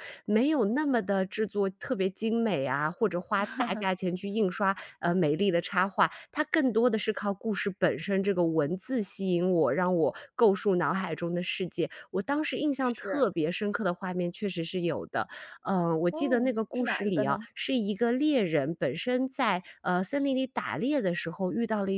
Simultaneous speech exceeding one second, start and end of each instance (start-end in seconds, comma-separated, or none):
16.1-17.5